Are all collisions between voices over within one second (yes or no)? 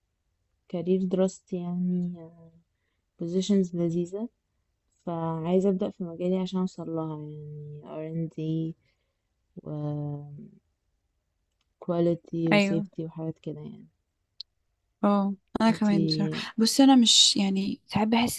yes